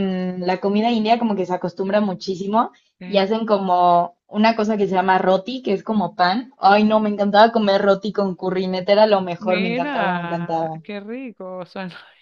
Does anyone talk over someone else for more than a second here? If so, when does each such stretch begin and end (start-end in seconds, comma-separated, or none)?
9.4-10.8